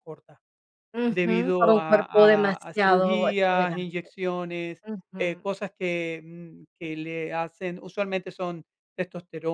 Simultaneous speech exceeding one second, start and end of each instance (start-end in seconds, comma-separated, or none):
1.1-4.1